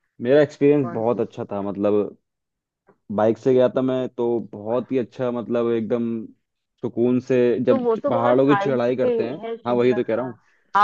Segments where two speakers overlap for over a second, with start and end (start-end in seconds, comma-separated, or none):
7.7-10.3